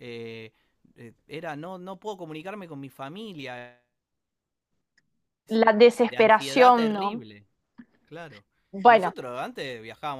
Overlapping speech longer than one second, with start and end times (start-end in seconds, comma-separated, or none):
6.0-7.2